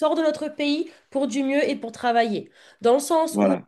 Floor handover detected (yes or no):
no